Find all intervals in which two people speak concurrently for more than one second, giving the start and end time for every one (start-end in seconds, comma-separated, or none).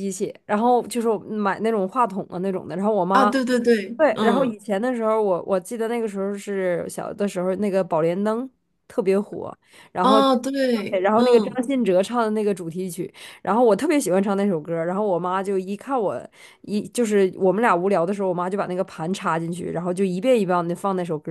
10.0-11.6